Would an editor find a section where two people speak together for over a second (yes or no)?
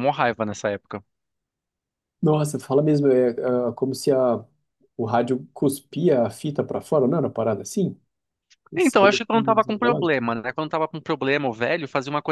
yes